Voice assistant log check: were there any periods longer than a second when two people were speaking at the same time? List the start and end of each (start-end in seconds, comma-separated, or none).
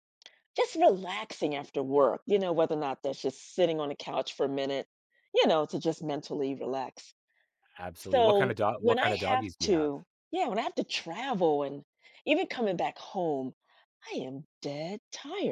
8.1-9.9